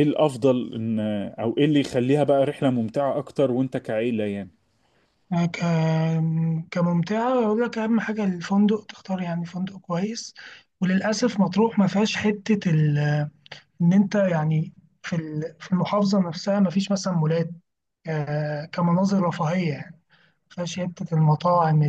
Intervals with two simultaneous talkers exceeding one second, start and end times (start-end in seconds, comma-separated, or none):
none